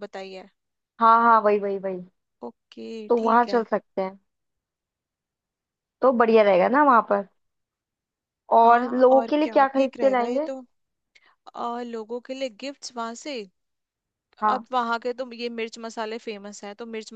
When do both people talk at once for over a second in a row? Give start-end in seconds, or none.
8.6-10.5